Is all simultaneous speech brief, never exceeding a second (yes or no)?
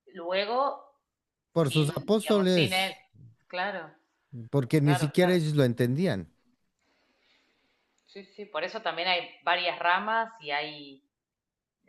no